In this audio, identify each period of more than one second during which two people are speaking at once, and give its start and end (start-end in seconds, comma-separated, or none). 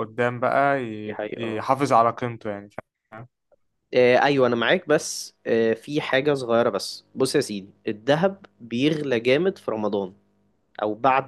none